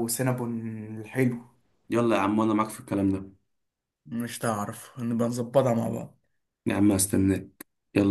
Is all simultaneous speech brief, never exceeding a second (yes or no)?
yes